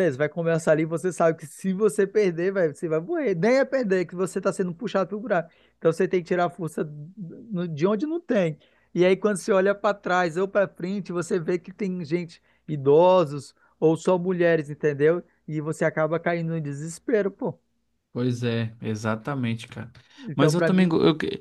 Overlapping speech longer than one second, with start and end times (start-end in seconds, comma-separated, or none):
none